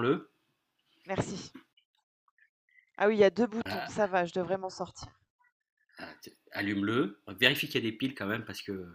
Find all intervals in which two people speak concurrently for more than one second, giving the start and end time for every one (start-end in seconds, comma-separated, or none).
none